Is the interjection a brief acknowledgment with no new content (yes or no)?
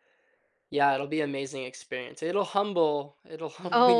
no